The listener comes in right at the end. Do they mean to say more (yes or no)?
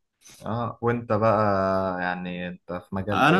yes